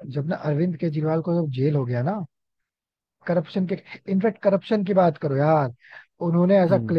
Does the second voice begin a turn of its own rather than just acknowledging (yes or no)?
no